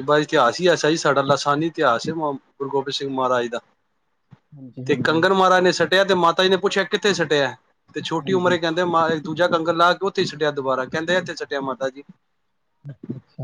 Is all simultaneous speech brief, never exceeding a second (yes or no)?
yes